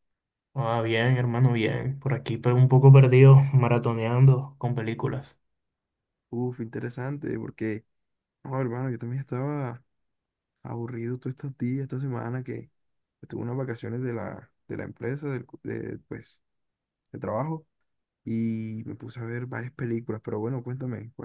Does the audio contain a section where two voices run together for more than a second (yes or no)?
no